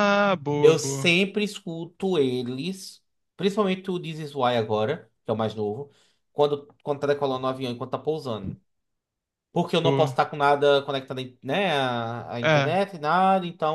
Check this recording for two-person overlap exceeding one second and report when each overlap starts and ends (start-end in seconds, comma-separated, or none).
none